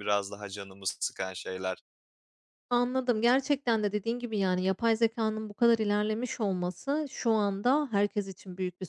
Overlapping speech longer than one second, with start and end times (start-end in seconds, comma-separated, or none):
none